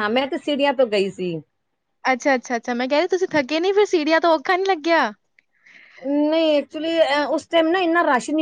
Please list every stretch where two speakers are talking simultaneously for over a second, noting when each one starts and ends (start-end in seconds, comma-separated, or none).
none